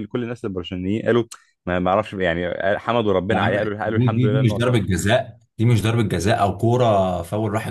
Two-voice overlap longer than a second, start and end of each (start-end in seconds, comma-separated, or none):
3.3-4.8